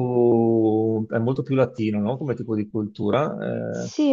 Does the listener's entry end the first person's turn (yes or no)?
yes